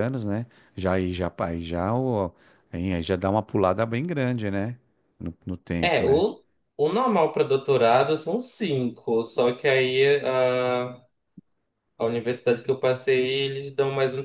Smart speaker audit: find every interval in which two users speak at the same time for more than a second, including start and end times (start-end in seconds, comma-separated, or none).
none